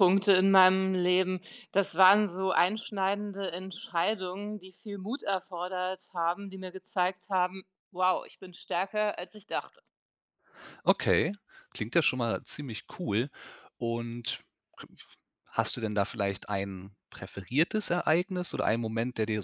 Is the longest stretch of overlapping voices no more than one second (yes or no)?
yes